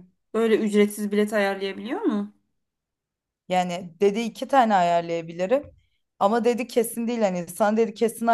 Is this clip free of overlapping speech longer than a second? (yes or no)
yes